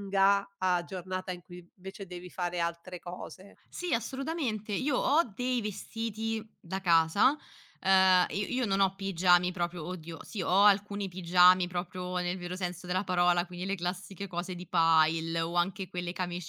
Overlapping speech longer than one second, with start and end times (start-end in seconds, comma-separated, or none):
none